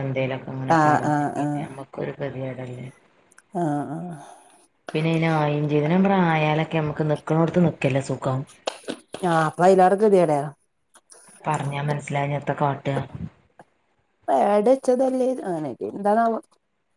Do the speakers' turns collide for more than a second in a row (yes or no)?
no